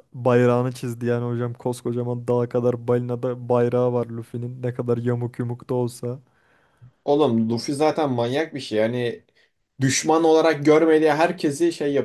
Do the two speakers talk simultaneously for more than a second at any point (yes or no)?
no